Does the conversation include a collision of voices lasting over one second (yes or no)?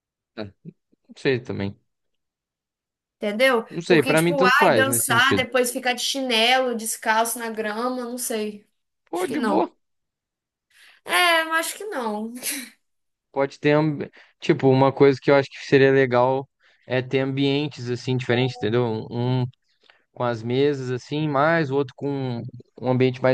yes